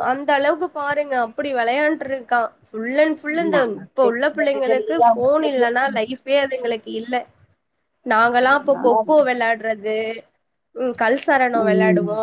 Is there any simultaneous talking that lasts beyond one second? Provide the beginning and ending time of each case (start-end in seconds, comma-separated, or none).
3.5-6.0